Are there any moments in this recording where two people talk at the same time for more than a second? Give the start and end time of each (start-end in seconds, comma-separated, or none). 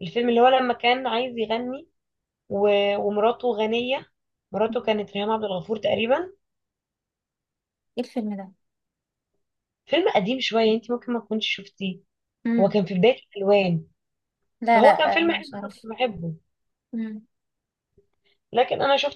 14.7-15.9